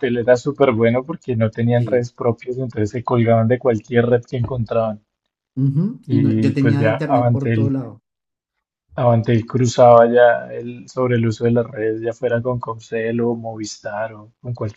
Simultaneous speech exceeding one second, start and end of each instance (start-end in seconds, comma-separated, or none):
6.0-7.7